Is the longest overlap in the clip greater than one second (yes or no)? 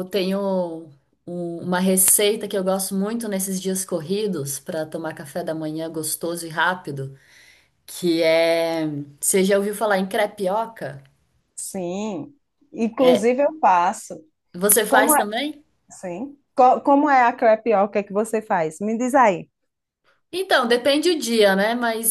no